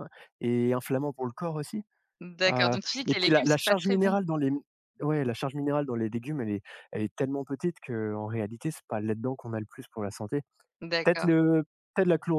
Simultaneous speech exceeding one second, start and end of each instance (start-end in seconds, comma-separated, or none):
2.5-4.1